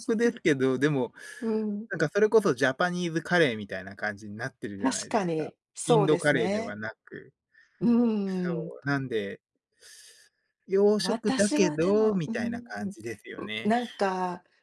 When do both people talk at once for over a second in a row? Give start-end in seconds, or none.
4.8-6.8, 11.0-12.9